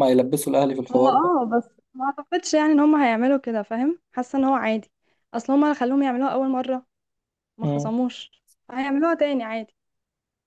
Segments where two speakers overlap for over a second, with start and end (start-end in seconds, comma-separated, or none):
none